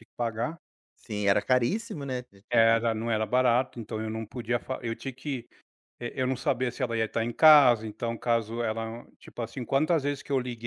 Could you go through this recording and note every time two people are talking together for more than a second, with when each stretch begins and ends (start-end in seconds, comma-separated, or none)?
none